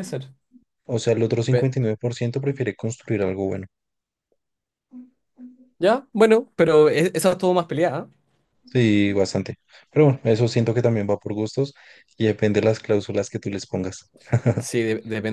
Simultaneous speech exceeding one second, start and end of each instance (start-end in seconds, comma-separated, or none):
none